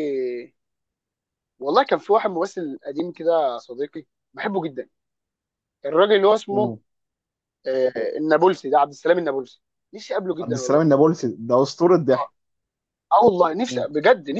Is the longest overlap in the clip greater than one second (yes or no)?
no